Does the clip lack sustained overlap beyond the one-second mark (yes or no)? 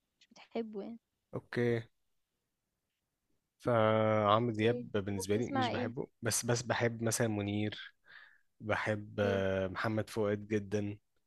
no